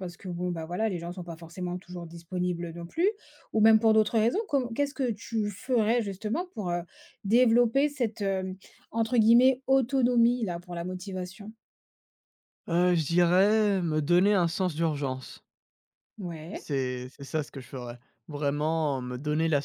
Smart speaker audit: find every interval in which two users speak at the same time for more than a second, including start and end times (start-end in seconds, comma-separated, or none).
none